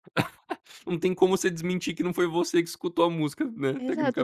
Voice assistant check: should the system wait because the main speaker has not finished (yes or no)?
no